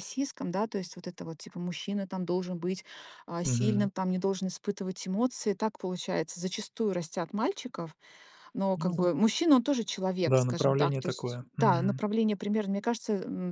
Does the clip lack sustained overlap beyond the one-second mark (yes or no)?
no